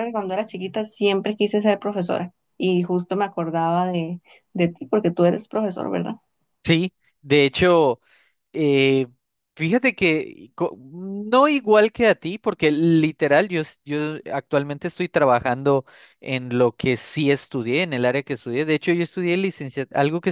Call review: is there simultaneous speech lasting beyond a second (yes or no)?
no